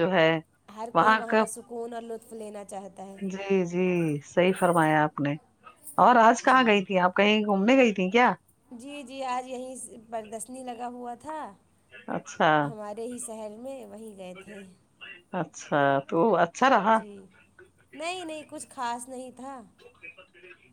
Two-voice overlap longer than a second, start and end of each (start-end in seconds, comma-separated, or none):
none